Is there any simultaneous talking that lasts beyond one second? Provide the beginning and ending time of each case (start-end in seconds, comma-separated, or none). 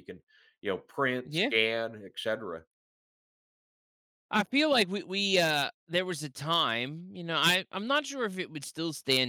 none